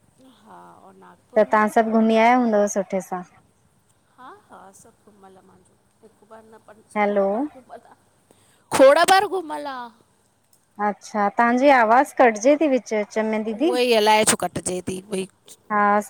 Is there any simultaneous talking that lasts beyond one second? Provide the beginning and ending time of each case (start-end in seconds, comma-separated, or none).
none